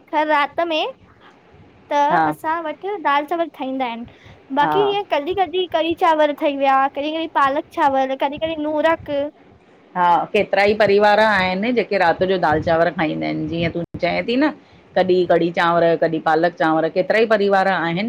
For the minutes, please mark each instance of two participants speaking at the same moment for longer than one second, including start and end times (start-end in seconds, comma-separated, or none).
none